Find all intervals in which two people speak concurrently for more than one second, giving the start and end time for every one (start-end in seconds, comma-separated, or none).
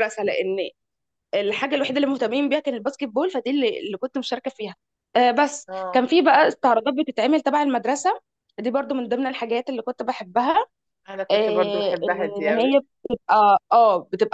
11.3-12.8